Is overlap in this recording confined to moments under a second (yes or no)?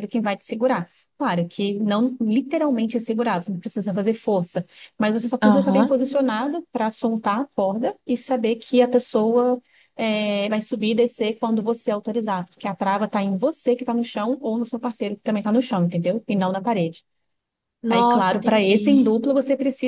no